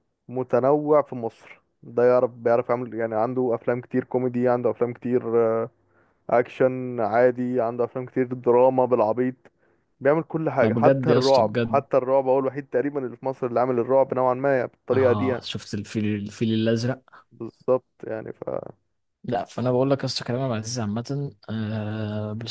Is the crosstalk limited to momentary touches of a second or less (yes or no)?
no